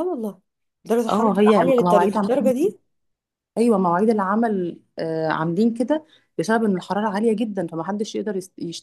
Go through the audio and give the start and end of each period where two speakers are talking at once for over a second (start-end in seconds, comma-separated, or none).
1.1-2.5